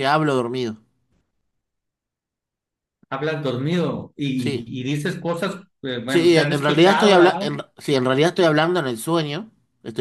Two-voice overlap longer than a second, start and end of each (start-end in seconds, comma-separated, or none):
6.1-7.6